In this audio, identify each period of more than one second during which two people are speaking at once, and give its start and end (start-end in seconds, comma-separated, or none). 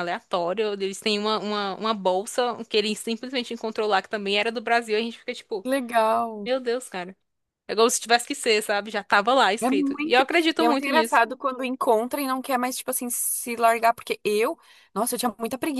9.6-11.2